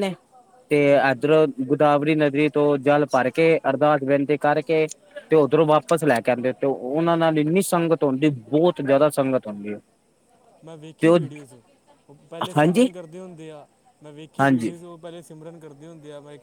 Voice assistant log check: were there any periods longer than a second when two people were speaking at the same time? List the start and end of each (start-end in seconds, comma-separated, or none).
none